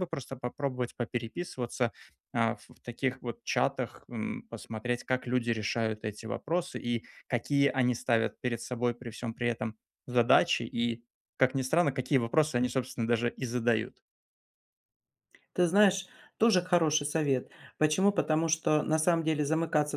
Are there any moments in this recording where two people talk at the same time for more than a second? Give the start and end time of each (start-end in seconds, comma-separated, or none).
none